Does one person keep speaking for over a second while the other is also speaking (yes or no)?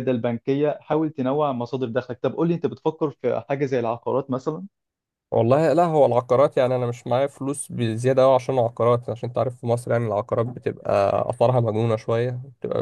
no